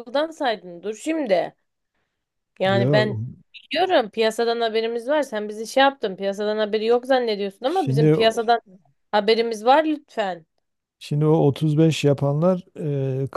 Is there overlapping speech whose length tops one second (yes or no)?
no